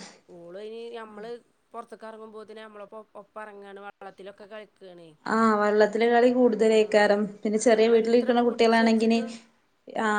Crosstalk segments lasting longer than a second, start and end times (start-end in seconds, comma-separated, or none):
7.7-9.2